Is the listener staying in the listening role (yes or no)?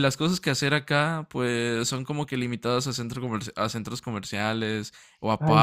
no